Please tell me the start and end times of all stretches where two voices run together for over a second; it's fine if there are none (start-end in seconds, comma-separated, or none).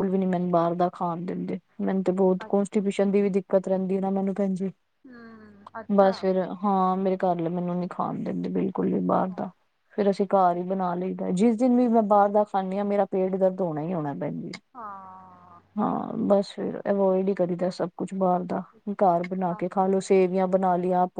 none